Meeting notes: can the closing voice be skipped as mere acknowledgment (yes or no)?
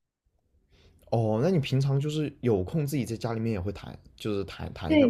no